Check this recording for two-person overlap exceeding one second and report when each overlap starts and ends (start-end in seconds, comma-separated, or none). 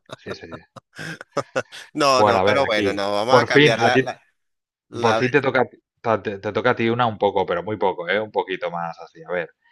2.1-4.1